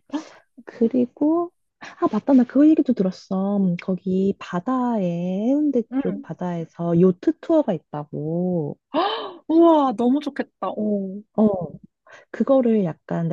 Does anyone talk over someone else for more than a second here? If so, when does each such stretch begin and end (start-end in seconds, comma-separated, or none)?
none